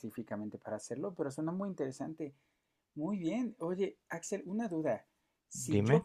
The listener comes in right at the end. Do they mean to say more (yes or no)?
no